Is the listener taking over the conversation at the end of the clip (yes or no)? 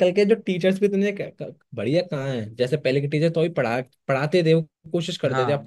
no